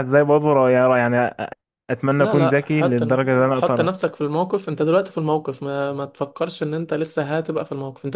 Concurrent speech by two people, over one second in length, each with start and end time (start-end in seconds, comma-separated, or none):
2.2-4.0